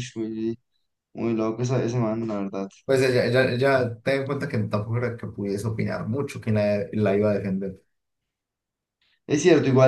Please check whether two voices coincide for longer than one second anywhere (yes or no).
no